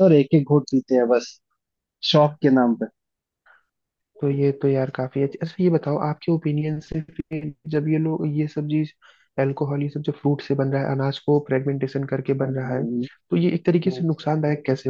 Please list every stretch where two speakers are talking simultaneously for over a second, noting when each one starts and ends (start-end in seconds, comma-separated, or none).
none